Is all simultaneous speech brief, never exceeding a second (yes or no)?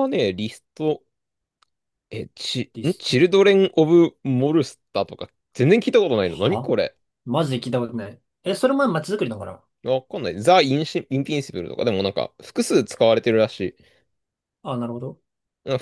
yes